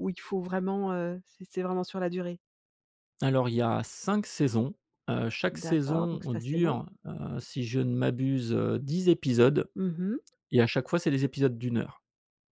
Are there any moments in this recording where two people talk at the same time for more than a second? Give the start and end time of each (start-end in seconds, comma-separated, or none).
5.5-6.8